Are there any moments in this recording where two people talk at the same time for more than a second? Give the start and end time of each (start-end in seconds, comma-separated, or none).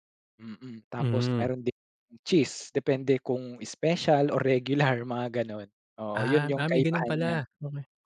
6.1-7.3